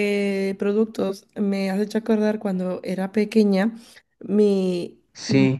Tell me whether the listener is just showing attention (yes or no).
yes